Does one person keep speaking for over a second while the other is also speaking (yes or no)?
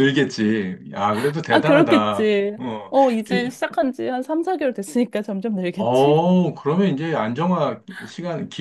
yes